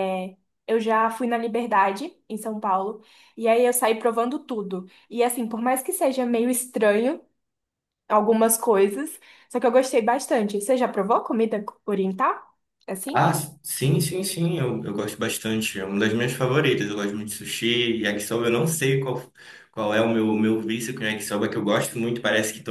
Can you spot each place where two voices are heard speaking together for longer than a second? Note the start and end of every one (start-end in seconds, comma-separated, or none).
none